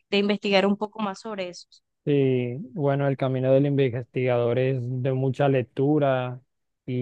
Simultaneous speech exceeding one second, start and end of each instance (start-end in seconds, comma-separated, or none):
none